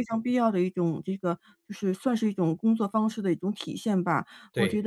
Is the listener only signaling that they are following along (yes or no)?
yes